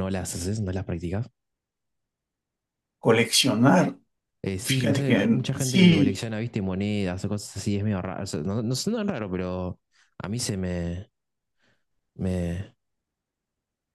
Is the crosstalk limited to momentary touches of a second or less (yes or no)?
no